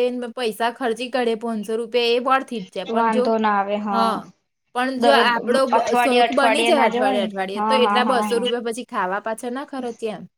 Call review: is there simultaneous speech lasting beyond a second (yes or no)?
yes